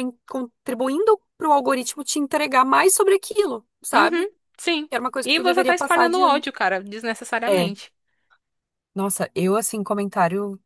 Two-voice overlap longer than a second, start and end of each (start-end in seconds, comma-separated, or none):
5.2-6.5